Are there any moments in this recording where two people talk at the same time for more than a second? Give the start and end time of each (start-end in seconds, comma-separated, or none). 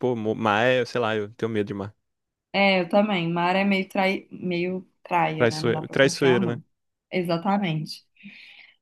5.4-6.6